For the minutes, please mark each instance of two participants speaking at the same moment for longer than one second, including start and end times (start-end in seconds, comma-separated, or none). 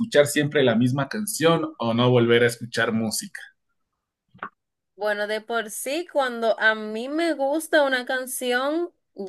none